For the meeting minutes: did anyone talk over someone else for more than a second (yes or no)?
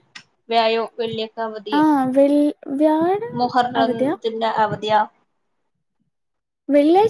no